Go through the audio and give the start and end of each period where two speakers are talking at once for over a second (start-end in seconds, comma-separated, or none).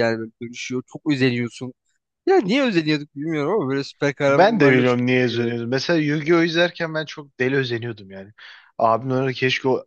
4.3-5.5